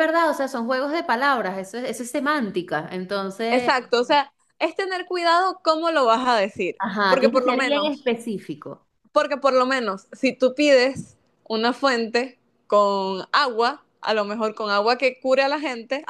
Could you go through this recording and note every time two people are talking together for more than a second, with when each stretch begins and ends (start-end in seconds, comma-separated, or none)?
6.8-8.1